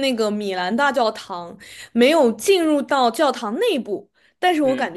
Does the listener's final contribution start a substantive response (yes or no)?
no